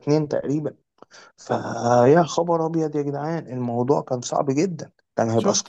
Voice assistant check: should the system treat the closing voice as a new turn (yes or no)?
yes